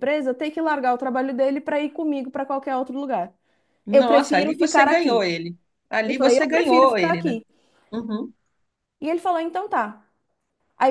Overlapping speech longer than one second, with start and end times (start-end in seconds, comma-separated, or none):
3.9-5.3, 6.1-7.4